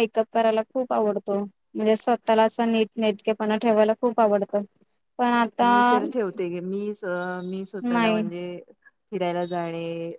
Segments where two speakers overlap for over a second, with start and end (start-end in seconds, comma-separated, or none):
none